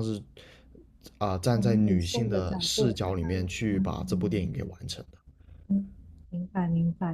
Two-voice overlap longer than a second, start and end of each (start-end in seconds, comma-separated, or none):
1.5-4.5